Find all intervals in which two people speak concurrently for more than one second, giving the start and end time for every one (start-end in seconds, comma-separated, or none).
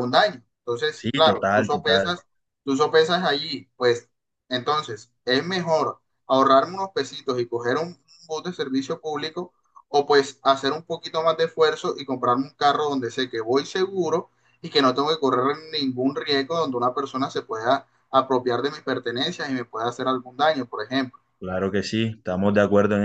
0.9-2.2